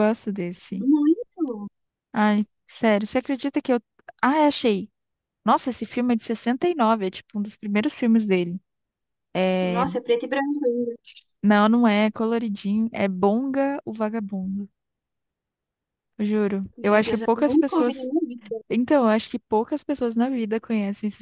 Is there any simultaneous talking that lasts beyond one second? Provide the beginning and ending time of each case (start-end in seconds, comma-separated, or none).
16.8-18.1